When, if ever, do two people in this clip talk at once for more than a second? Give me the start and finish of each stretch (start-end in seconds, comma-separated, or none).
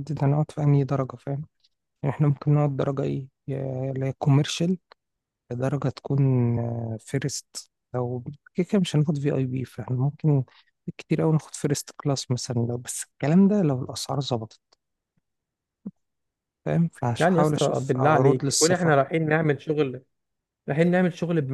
17.2-18.9